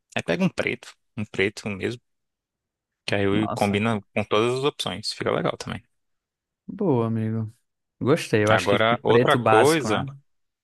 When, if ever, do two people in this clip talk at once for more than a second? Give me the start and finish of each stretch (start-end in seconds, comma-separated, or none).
8.5-10.1